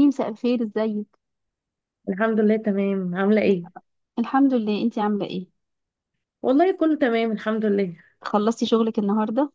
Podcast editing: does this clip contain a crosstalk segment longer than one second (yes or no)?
no